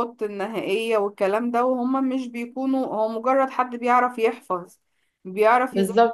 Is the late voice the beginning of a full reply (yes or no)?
yes